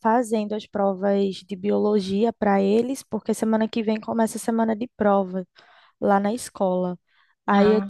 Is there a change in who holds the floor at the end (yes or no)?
no